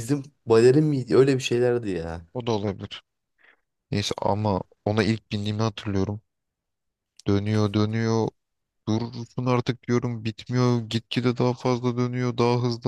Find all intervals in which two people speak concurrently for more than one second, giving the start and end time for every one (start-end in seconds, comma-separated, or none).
none